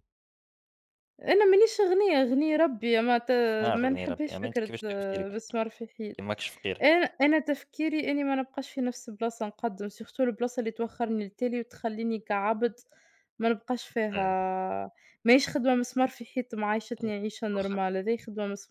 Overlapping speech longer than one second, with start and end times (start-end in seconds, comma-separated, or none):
3.7-5.4